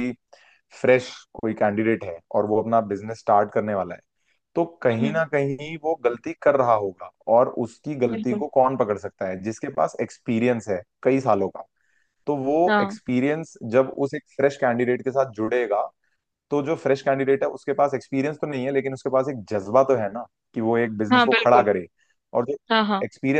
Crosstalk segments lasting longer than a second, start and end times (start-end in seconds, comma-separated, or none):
none